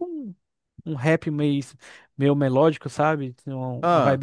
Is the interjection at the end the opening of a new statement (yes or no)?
no